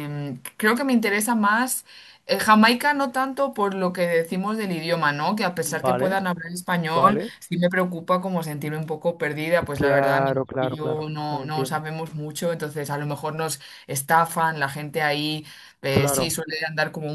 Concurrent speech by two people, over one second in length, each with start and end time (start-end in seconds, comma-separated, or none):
9.7-11.8